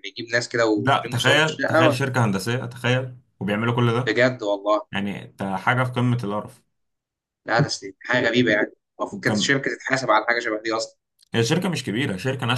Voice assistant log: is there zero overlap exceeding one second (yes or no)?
no